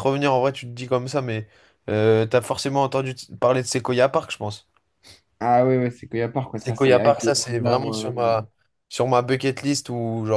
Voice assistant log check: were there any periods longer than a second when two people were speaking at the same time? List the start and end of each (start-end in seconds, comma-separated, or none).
6.6-8.1